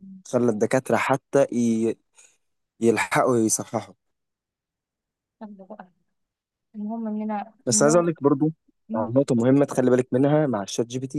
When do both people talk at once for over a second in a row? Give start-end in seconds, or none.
none